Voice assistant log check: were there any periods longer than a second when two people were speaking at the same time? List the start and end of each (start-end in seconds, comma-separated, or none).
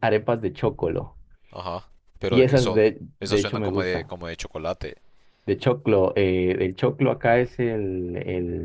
2.3-4.1